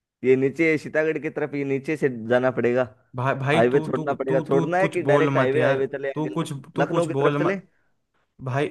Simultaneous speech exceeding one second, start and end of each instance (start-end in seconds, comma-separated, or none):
3.5-7.5